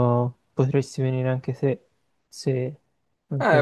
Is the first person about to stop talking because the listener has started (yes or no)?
yes